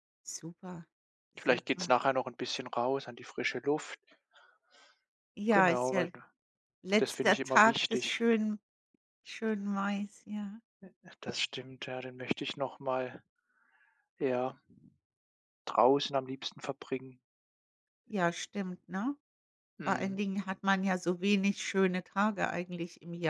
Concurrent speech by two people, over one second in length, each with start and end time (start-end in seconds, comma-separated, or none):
7.0-8.2